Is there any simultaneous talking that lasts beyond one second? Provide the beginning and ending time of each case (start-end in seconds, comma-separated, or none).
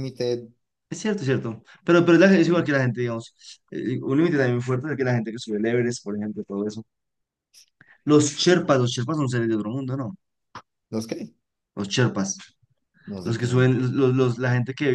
none